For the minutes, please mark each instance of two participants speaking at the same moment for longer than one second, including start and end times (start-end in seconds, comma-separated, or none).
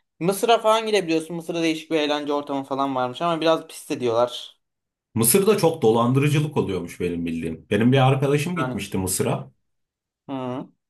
none